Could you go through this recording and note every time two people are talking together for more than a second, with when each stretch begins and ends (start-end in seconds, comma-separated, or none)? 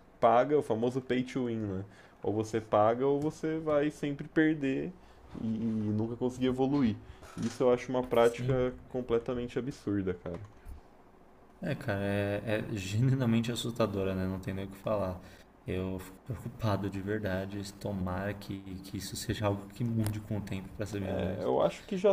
none